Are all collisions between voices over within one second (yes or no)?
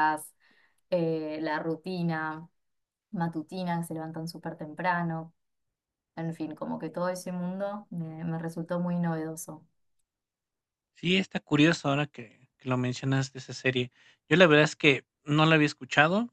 yes